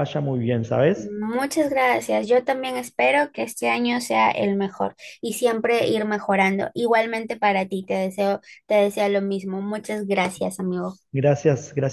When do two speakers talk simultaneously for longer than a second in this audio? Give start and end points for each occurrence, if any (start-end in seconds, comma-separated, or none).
none